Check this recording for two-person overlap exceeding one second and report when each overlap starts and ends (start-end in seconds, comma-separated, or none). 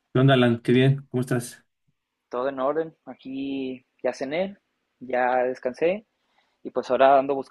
none